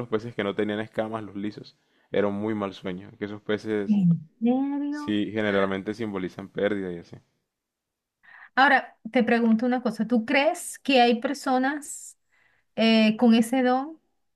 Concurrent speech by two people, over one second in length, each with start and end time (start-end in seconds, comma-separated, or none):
none